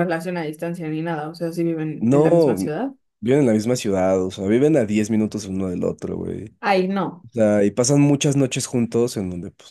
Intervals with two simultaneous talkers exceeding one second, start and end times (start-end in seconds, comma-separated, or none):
none